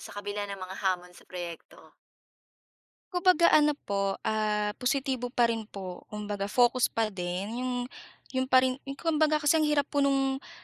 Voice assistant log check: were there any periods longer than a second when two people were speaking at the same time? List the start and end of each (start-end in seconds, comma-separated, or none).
none